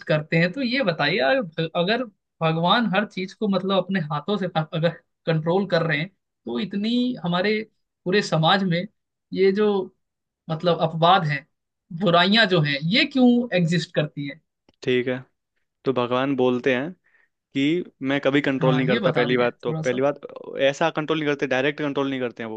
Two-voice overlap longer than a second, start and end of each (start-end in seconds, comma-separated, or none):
18.6-20.0